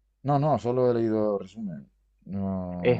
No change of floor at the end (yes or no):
no